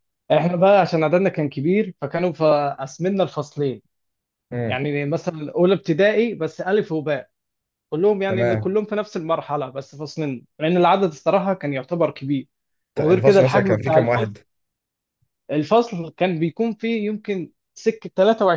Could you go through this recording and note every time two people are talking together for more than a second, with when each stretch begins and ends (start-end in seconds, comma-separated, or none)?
13.0-14.4